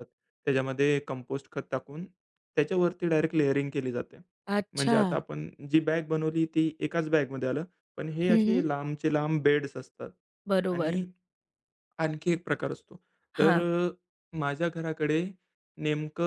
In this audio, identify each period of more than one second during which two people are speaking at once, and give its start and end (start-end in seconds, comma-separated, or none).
none